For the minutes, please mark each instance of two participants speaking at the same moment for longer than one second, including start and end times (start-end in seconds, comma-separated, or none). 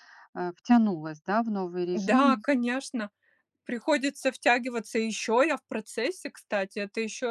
none